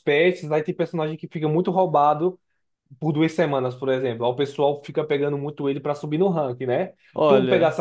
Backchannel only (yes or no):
yes